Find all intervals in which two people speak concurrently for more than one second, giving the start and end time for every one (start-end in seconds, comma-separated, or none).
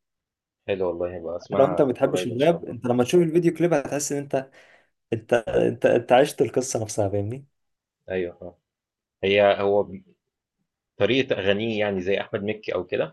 1.6-2.8